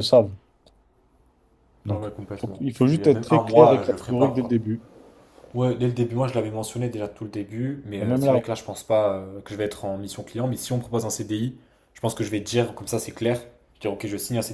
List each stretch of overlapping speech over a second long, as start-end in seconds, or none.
1.9-4.6